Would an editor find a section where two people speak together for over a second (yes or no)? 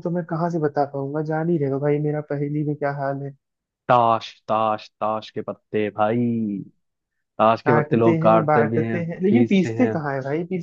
yes